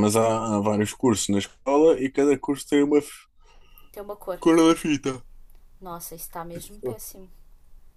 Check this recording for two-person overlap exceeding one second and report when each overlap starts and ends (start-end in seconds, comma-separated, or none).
none